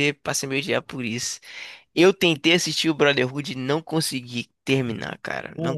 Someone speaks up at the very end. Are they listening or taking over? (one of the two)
listening